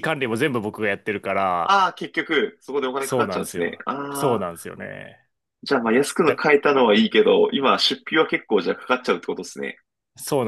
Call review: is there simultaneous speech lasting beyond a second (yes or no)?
yes